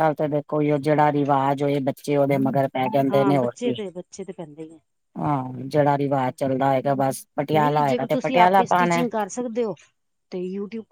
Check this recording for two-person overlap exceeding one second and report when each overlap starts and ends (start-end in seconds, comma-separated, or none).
7.6-9.0